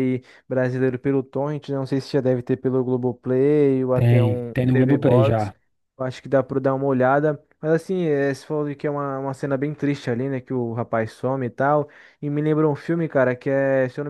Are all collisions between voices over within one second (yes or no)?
no